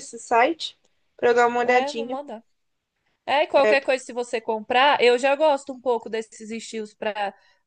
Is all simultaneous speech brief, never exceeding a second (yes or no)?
yes